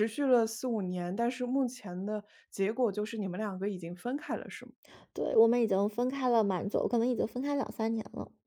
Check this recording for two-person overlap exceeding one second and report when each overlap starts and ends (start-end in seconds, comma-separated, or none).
none